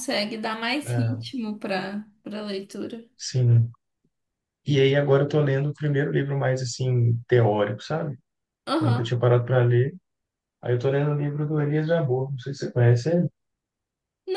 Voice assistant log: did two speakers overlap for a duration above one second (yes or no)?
no